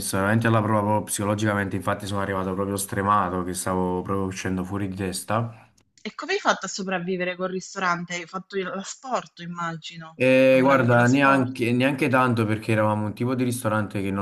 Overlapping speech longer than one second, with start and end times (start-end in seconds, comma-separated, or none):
10.2-11.6